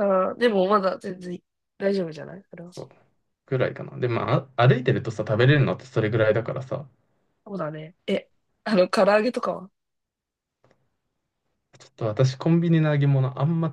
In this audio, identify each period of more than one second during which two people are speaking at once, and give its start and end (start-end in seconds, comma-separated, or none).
none